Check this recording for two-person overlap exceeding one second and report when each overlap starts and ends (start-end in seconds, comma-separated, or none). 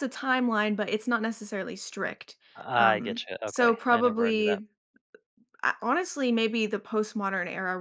2.8-4.6